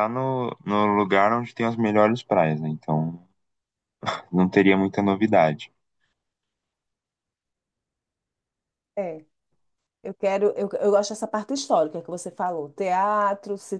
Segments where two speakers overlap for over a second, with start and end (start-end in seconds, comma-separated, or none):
none